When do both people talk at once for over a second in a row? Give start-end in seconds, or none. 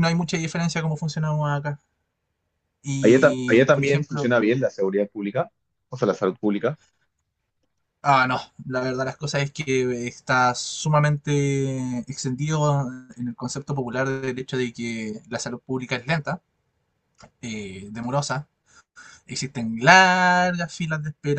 3.0-4.3